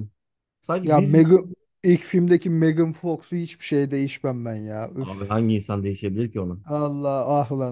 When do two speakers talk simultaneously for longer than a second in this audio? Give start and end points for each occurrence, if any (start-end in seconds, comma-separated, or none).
none